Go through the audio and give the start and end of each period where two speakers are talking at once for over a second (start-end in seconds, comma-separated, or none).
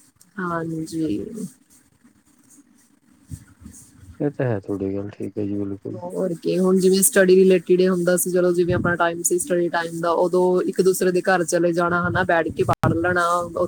none